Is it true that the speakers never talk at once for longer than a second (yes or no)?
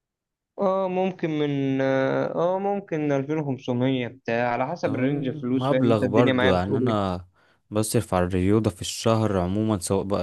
no